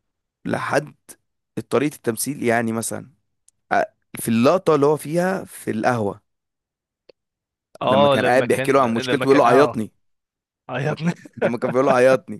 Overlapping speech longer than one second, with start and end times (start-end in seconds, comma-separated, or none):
7.8-9.8